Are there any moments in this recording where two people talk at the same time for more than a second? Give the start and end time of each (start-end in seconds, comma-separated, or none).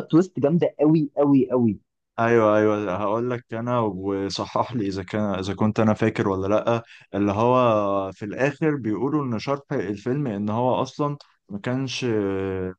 none